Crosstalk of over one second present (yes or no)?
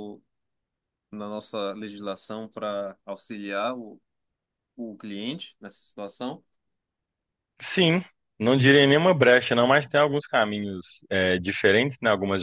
no